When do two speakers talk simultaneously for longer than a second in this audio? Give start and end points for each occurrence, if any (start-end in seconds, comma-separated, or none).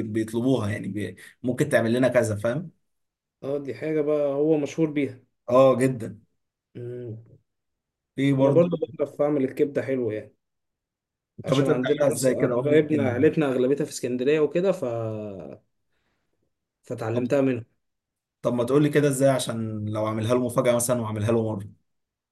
11.5-13.2